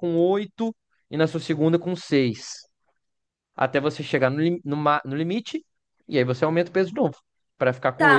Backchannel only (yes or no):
no